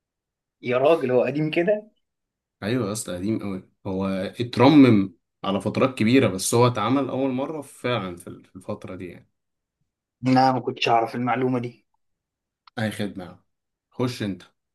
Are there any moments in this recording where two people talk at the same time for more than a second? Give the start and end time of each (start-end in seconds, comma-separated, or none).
none